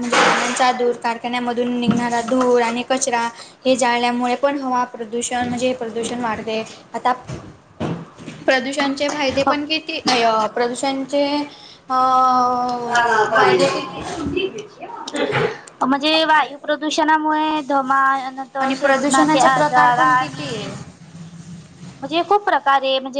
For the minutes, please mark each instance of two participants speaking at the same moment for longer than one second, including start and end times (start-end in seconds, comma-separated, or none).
18.8-20.6